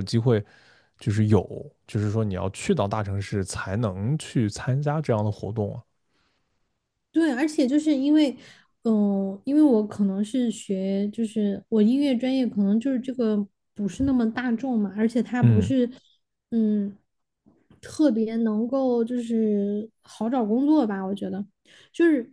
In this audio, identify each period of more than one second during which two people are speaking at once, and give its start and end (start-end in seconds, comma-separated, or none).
none